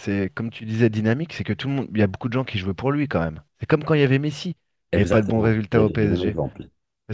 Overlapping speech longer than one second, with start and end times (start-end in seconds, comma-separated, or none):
4.9-6.3